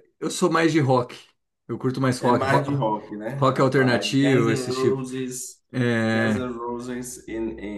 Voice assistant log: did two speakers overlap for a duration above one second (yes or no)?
yes